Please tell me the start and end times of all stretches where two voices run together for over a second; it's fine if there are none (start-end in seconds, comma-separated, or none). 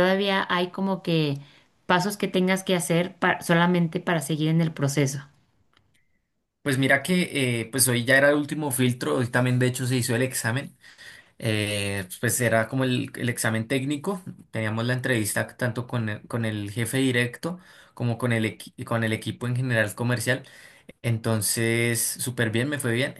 none